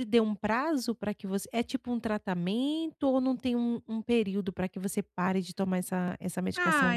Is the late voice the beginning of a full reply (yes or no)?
yes